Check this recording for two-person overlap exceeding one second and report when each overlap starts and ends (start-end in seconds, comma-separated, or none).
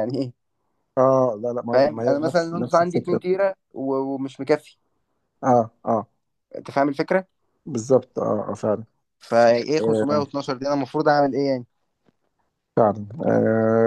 1.7-3.2